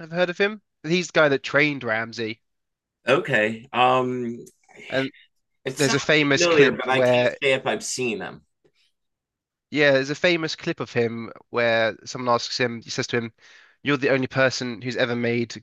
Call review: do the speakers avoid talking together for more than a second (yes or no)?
no